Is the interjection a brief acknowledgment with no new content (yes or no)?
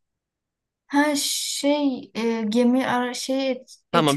no